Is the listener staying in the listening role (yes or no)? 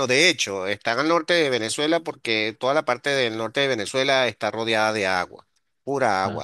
yes